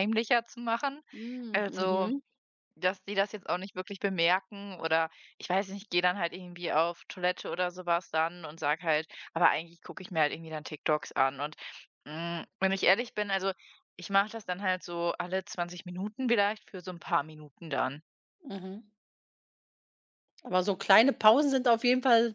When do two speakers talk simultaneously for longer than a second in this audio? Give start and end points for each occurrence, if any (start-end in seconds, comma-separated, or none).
none